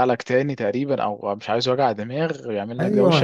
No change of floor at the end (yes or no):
no